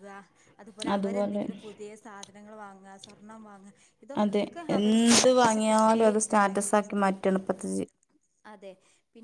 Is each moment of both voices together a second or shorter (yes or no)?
yes